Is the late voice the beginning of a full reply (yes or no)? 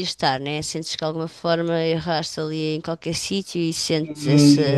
yes